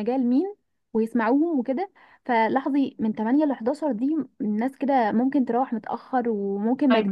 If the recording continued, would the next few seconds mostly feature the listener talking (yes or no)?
yes